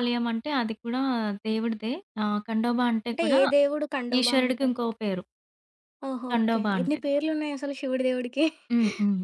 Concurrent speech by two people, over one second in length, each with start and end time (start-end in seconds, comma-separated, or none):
none